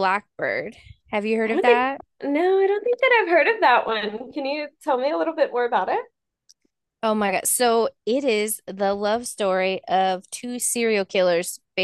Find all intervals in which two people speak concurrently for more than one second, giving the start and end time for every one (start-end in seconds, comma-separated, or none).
none